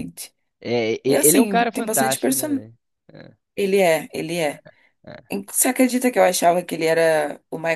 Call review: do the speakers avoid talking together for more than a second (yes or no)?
no